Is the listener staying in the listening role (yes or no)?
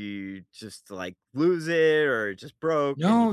no